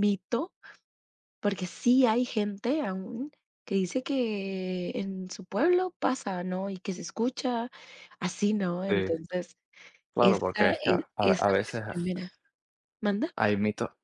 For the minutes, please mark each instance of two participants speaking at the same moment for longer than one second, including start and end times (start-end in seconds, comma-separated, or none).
10.2-11.8